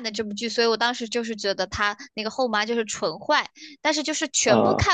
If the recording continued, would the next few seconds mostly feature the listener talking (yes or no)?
no